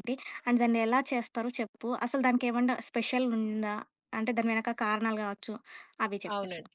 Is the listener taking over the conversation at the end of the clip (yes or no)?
yes